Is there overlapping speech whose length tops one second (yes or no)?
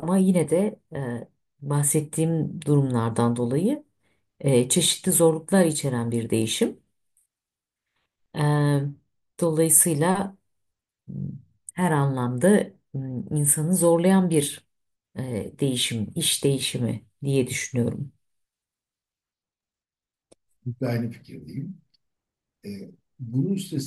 no